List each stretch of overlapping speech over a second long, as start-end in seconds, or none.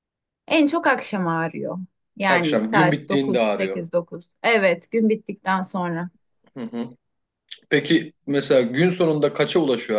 2.3-3.9